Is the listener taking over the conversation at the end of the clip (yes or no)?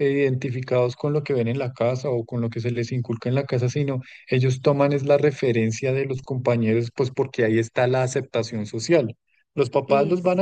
no